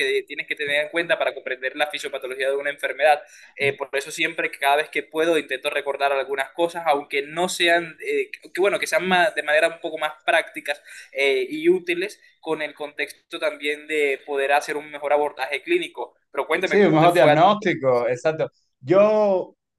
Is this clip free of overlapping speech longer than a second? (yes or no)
no